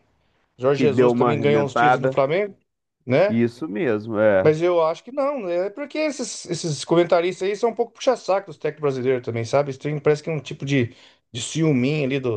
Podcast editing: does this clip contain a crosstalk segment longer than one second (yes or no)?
yes